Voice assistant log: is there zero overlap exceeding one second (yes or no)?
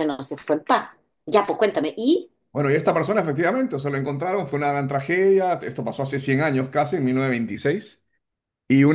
yes